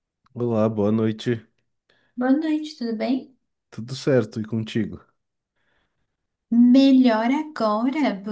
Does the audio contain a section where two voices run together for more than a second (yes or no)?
no